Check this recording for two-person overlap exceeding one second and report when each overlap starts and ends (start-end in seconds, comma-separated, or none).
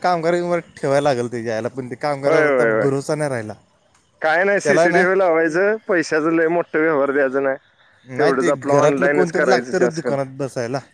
8.2-10.1